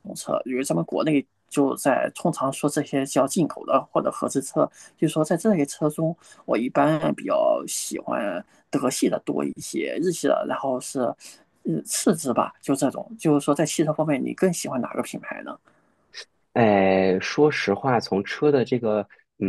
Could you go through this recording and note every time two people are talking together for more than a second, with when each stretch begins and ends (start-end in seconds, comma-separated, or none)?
none